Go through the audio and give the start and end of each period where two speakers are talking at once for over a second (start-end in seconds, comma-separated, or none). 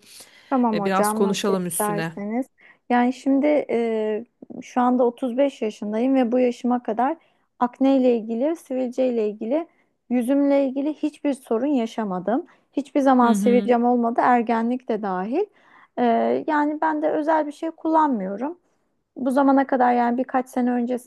0.7-2.1